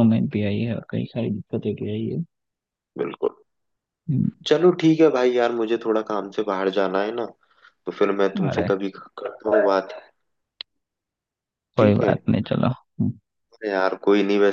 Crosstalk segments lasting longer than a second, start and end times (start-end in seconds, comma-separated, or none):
none